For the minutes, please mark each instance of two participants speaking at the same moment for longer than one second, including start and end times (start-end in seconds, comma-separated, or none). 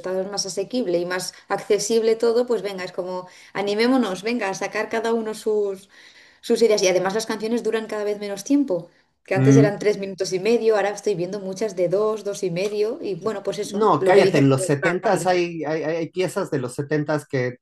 13.6-15.3